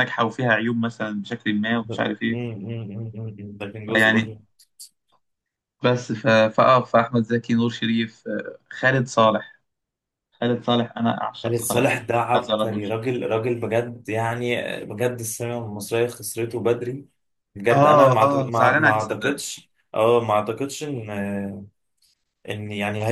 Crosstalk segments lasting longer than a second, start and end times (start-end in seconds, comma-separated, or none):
17.7-19.4